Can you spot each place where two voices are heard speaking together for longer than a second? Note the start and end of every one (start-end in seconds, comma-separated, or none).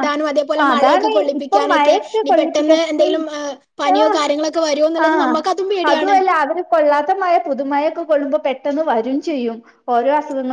0.7-2.7